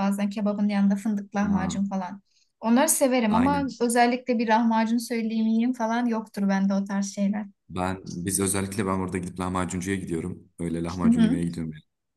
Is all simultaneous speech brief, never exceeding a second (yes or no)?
yes